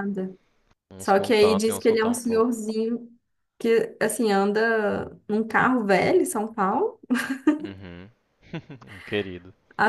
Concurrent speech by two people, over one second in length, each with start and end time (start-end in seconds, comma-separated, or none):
1.0-2.6